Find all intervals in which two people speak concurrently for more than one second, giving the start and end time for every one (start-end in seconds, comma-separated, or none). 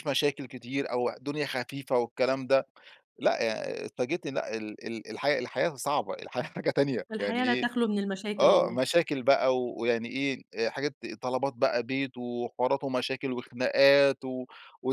none